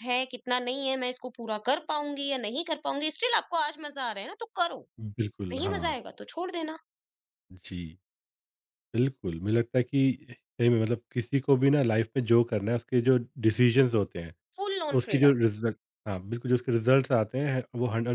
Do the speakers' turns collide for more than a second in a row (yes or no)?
no